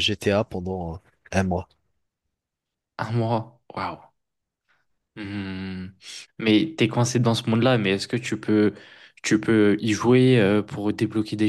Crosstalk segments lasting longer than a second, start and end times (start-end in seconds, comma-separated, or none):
none